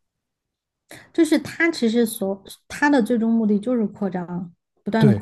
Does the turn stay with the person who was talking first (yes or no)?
no